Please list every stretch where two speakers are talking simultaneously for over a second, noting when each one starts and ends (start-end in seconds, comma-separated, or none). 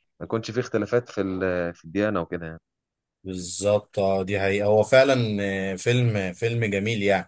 none